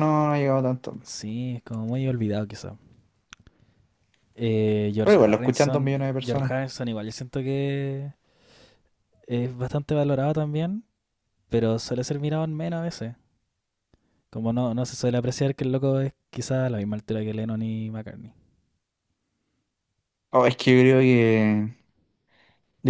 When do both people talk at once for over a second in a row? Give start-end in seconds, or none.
5.0-6.5